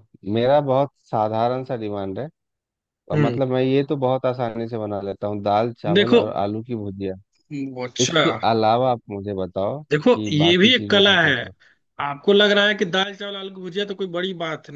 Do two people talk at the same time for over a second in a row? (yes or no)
yes